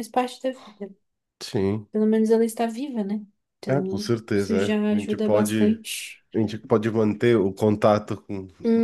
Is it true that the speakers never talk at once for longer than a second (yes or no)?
no